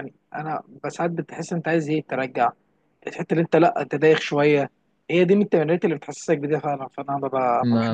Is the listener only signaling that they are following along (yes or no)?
no